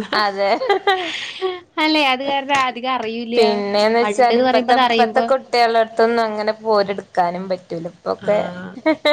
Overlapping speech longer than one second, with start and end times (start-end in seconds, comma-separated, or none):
none